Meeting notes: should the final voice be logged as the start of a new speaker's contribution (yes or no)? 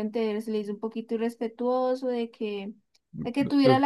no